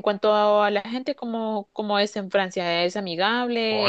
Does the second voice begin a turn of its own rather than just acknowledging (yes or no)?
yes